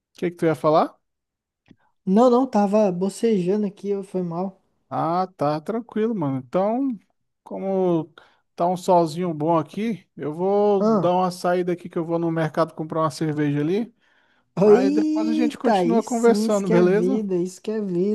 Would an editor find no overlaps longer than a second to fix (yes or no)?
no